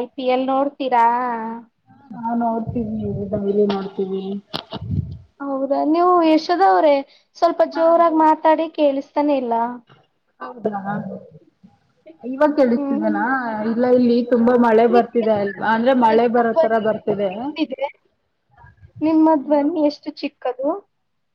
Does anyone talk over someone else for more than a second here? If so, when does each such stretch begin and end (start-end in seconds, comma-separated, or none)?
14.9-16.8